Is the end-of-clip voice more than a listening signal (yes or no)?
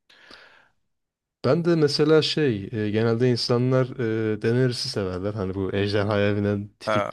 no